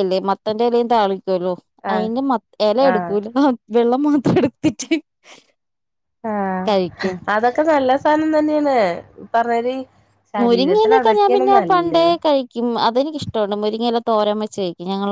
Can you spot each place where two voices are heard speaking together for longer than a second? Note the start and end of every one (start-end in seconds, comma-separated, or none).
10.4-12.1